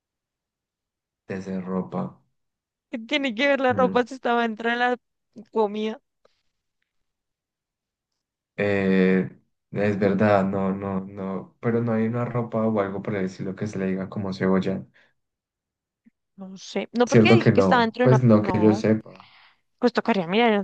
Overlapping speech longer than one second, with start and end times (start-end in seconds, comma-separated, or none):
17.1-18.8